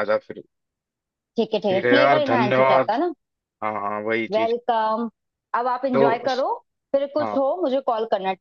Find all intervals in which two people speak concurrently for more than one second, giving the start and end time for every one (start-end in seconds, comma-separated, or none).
1.7-2.9